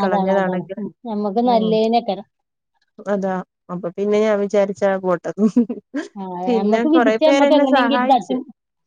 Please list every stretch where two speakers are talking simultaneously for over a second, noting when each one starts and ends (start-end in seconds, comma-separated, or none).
6.5-8.3